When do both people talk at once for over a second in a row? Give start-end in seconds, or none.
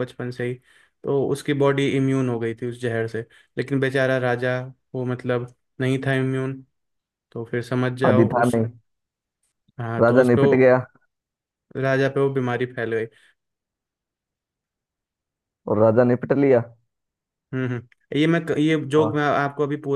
none